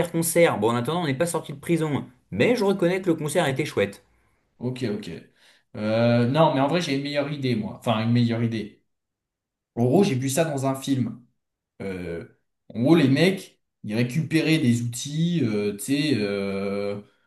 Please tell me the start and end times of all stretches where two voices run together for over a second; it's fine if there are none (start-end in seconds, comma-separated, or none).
none